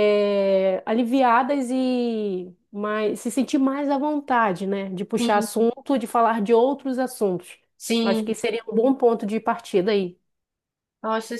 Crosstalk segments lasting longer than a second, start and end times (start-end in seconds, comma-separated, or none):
none